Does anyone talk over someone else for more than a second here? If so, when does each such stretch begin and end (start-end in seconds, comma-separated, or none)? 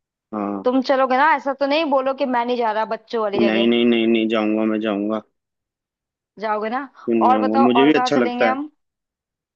7.1-8.6